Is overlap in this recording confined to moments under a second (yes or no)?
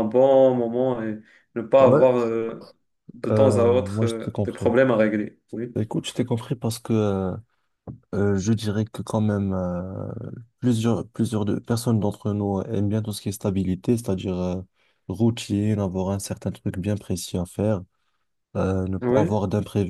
no